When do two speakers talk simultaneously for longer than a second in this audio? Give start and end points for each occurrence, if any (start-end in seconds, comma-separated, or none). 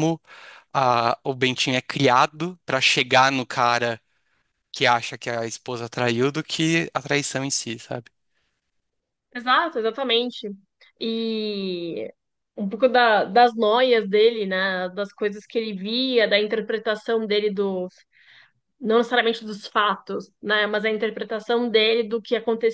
none